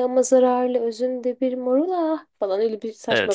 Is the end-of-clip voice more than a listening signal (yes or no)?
yes